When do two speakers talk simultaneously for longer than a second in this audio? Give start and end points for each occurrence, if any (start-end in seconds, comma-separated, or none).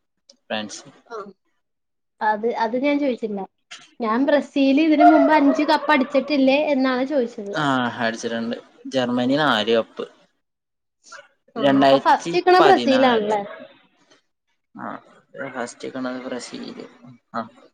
11.7-13.3